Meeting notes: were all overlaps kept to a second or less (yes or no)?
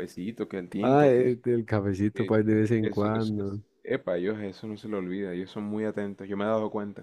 no